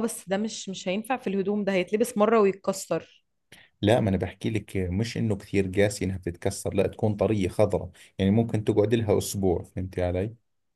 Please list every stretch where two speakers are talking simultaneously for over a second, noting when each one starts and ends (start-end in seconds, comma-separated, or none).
none